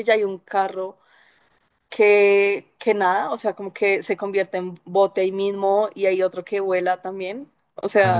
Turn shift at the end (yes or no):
yes